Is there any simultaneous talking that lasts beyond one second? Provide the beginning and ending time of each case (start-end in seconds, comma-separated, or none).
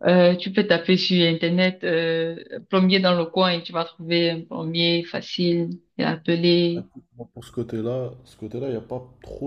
none